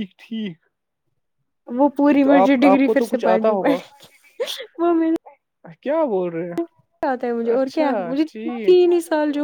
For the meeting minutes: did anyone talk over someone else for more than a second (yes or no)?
yes